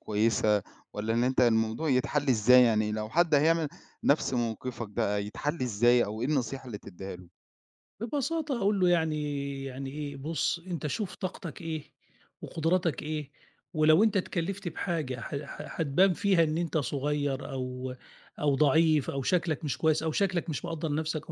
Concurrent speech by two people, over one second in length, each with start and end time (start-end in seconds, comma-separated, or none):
none